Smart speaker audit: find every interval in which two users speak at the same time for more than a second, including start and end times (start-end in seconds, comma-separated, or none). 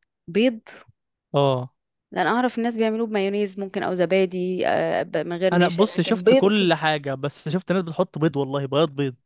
5.5-6.7